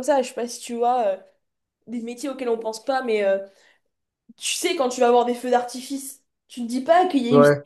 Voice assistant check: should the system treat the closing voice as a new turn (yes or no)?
no